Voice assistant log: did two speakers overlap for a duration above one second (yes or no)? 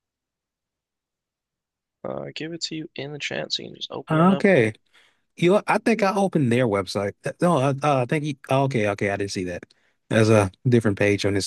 no